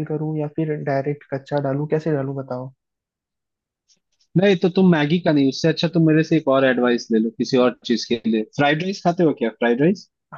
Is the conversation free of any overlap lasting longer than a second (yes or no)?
yes